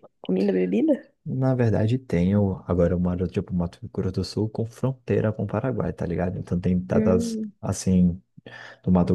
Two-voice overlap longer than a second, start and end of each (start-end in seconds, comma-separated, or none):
none